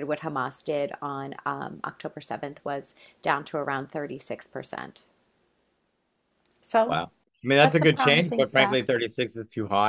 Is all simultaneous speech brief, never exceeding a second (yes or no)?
no